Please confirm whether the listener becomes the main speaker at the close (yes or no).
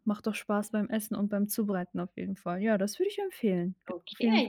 yes